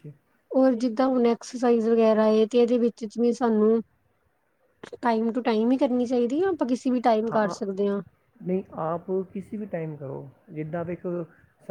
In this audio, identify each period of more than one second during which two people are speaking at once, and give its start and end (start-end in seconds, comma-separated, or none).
none